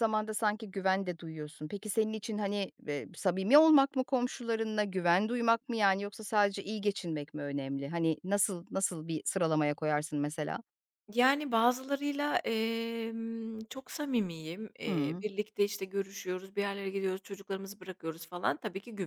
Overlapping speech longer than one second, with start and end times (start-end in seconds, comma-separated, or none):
none